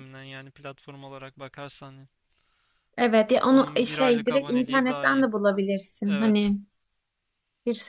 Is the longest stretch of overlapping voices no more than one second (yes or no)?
no